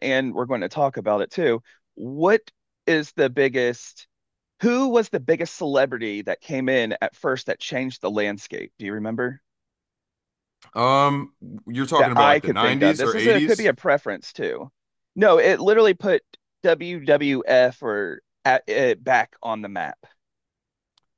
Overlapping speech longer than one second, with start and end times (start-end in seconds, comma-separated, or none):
11.9-13.7